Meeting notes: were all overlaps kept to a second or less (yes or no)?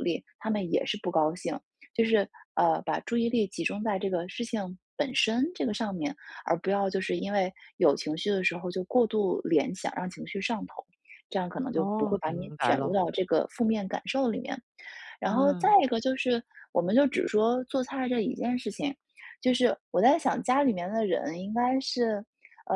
no